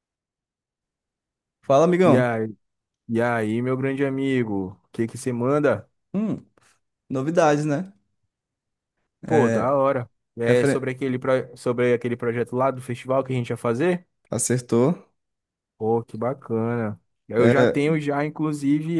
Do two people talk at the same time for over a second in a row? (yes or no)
no